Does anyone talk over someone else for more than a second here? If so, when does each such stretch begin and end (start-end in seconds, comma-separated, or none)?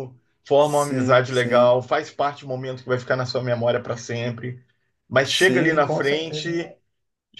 0.6-1.8, 5.2-6.5